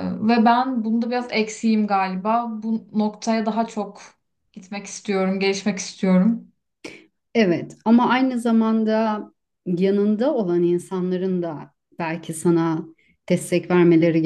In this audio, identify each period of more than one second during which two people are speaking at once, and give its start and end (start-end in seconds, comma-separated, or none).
none